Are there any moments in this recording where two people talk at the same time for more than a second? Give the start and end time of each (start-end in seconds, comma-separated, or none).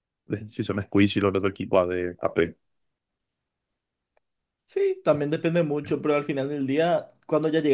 none